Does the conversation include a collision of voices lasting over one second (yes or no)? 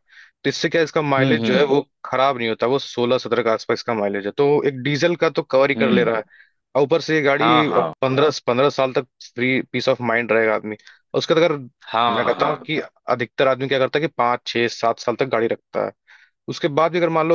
no